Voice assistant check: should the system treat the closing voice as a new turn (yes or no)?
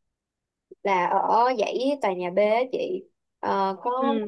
no